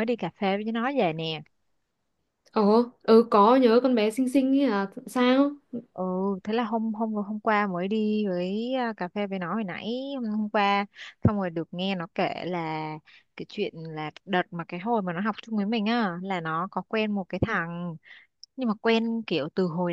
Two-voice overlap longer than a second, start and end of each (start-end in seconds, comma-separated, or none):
none